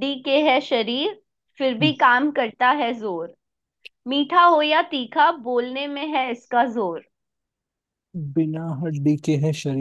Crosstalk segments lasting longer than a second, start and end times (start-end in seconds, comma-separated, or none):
none